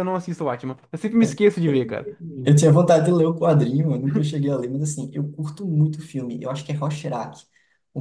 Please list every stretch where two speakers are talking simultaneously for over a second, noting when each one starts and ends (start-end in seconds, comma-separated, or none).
none